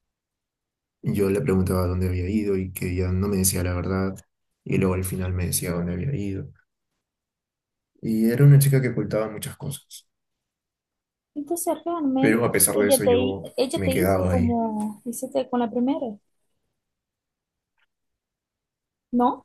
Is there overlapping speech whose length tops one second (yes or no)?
yes